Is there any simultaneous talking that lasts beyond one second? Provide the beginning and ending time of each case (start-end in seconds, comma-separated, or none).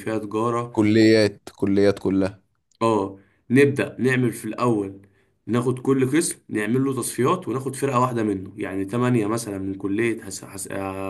none